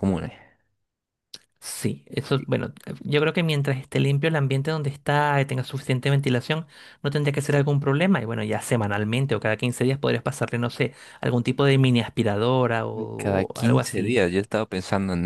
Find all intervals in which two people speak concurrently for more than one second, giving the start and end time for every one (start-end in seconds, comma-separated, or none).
13.0-14.2